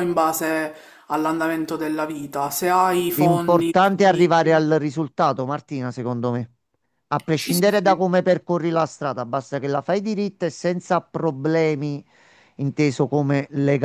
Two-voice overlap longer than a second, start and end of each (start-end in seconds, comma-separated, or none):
3.1-4.7